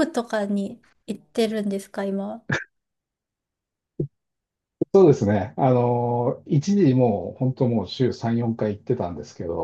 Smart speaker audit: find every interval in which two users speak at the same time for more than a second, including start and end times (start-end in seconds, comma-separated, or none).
none